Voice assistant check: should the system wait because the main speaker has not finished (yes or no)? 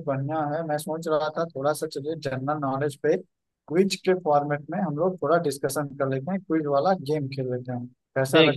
no